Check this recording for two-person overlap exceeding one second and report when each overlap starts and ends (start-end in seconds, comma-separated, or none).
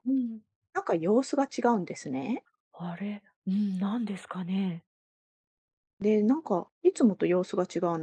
none